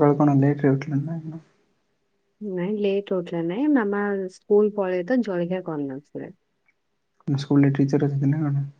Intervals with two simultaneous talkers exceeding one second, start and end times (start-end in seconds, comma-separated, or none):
none